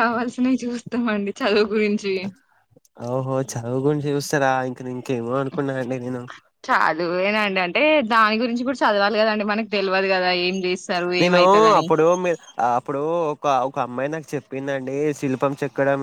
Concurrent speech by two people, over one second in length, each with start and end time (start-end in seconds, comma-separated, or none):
none